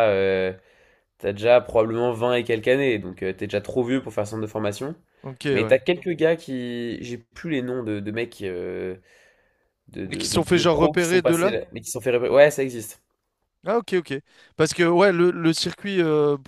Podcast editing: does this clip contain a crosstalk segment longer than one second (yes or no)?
yes